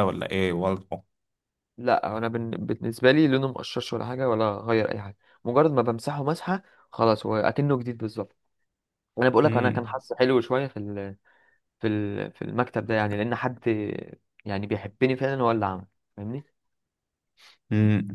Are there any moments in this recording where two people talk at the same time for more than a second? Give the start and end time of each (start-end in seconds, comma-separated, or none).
none